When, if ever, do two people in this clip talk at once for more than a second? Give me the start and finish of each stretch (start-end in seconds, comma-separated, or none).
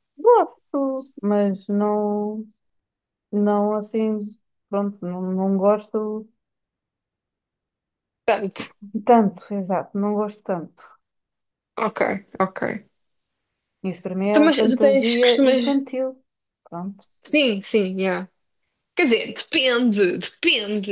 14.3-15.6